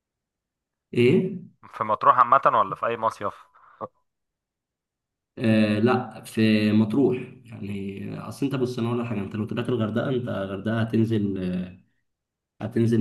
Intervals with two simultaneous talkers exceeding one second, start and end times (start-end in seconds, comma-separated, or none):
none